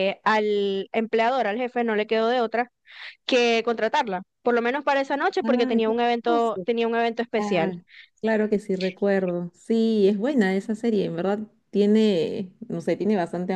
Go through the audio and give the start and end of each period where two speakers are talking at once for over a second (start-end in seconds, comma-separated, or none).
5.4-6.7